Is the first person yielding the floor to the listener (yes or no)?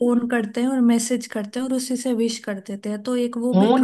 yes